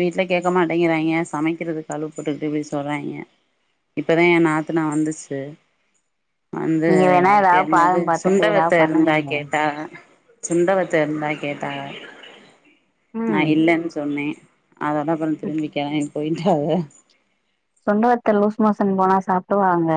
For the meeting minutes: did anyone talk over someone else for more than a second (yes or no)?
yes